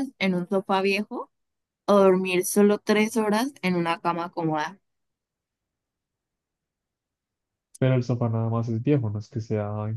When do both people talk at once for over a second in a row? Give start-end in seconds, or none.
none